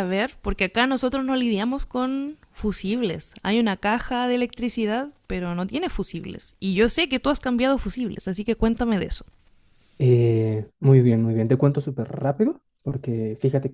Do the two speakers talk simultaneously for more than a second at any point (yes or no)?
no